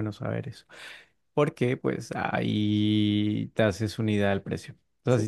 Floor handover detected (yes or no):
no